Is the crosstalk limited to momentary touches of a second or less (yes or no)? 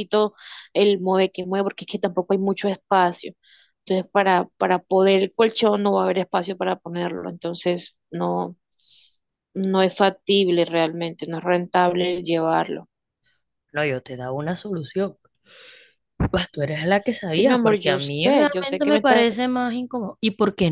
no